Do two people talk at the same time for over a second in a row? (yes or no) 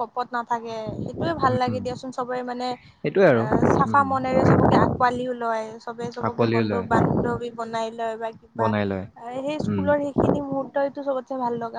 no